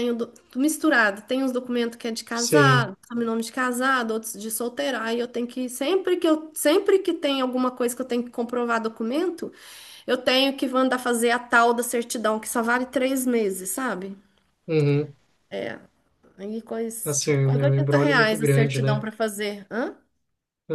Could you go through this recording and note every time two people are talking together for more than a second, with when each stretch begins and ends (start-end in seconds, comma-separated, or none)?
17.0-19.0